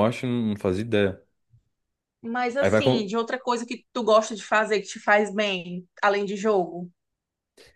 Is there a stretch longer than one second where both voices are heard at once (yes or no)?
no